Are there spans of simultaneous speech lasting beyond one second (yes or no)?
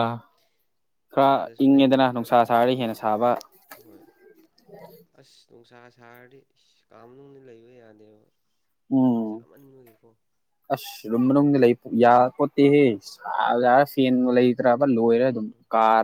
yes